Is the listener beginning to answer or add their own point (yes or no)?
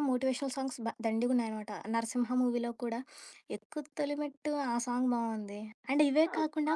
yes